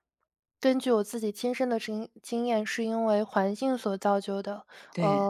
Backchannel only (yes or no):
yes